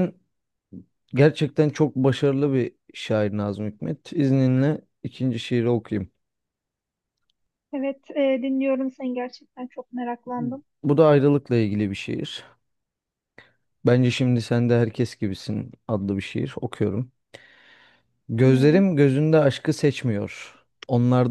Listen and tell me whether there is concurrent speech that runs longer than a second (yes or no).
no